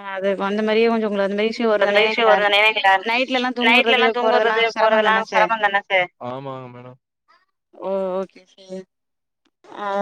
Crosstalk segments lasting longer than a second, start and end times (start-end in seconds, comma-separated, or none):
3.7-5.5